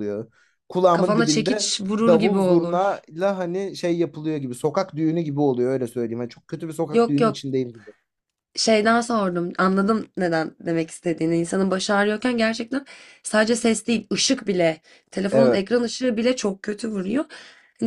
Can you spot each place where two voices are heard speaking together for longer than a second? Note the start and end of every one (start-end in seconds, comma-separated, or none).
0.9-3.0